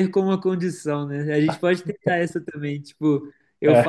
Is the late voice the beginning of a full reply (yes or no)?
no